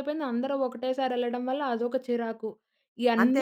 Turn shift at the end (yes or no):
no